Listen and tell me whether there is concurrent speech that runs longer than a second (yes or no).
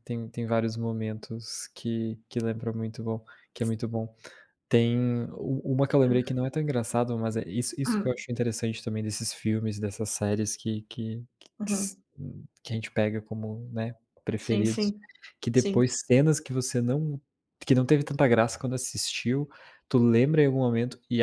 no